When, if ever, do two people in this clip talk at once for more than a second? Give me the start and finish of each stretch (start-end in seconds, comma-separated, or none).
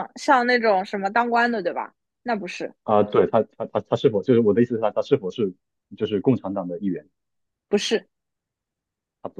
none